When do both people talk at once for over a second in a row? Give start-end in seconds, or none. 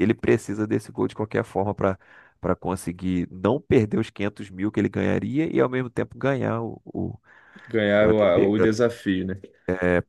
none